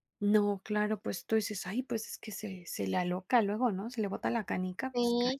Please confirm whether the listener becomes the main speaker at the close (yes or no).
yes